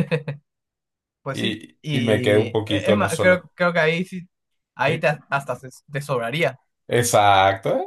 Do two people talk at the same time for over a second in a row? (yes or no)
yes